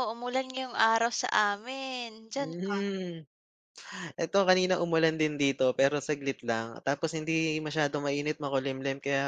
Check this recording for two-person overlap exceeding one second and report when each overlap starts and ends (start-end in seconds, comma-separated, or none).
none